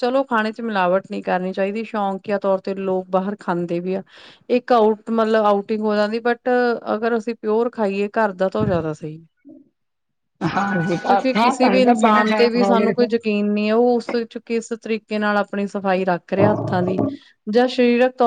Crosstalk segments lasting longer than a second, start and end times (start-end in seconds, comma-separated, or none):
11.3-13.1